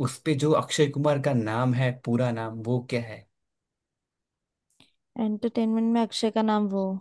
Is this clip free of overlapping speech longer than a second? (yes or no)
yes